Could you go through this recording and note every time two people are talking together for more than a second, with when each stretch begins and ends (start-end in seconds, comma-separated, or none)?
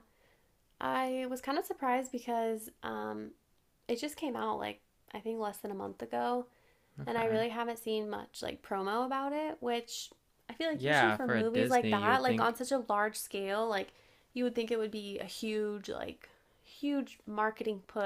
10.7-12.6